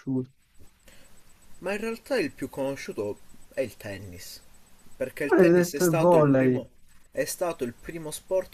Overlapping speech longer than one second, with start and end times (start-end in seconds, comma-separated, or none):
5.2-6.6